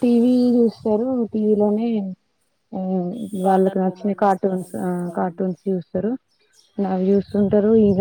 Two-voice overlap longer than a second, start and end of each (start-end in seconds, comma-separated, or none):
3.5-5.4